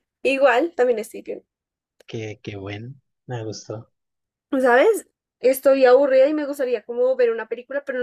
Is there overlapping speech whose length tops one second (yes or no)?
no